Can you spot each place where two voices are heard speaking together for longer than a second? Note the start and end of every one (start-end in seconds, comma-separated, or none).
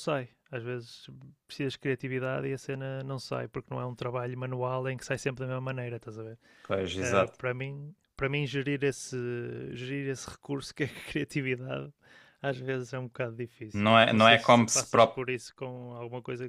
13.7-15.2